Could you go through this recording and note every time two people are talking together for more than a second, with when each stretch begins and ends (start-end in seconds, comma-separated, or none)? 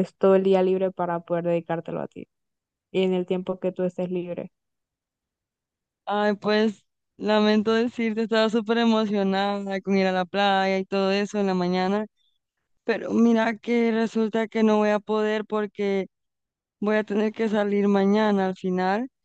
none